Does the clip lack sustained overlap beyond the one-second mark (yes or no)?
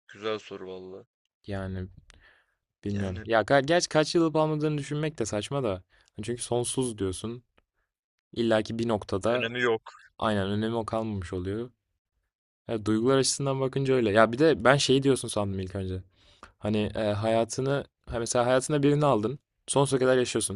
yes